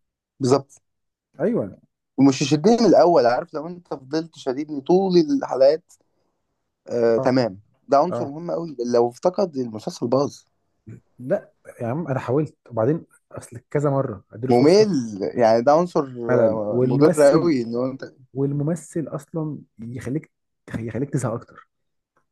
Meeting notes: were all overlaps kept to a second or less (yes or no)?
no